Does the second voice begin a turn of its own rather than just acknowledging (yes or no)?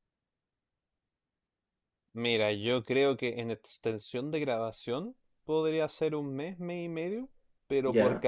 no